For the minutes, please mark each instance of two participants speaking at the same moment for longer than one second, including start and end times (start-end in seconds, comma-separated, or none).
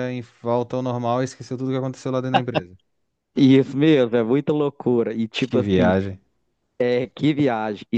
none